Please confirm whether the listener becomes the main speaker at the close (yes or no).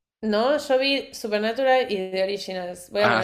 yes